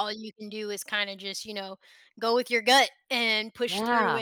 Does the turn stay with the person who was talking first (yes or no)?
yes